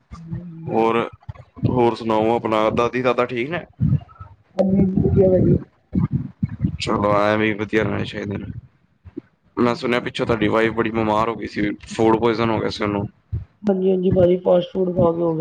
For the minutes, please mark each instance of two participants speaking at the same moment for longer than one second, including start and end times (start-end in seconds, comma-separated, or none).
none